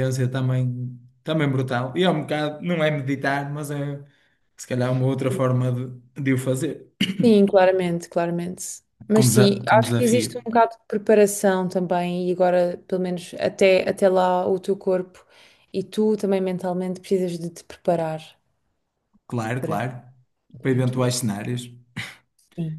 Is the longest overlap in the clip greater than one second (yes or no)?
yes